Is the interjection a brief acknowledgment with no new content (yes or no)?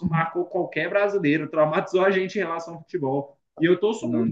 yes